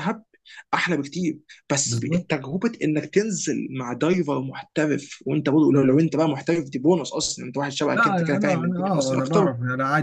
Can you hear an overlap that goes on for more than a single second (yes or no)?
yes